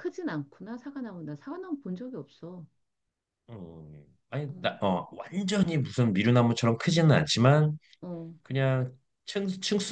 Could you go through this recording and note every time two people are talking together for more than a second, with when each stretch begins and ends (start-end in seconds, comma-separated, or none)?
none